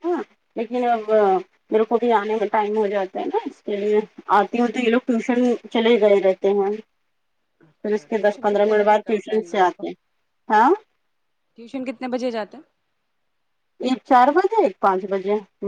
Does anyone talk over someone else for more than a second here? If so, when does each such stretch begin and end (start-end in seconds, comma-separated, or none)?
7.8-9.8